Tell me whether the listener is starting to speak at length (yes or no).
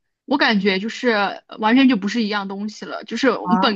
no